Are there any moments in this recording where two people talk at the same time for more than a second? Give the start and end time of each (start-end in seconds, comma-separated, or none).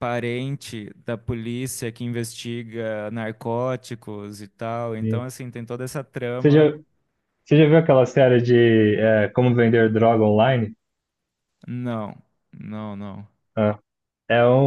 none